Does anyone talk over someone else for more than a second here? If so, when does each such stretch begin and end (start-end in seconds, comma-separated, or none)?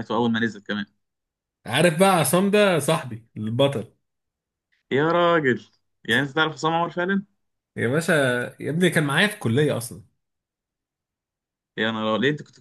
none